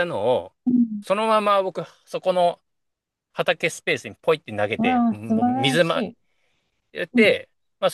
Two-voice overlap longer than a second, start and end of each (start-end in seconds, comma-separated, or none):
4.8-6.0